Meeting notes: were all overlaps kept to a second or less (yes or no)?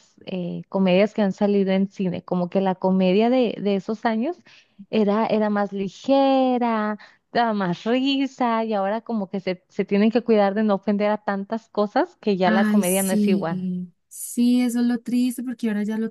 no